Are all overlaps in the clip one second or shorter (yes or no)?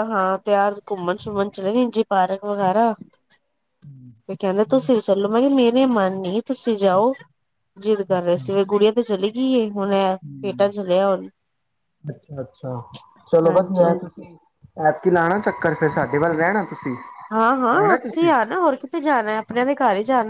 yes